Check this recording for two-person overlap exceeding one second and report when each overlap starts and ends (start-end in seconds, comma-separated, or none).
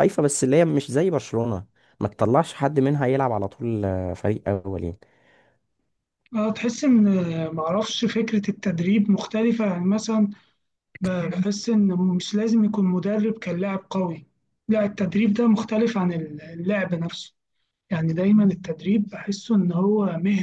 none